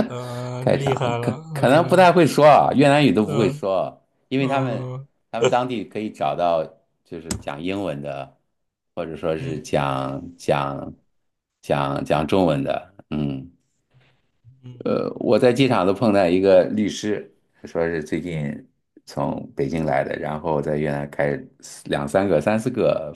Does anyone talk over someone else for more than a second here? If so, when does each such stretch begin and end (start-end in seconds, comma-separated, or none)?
0.6-2.1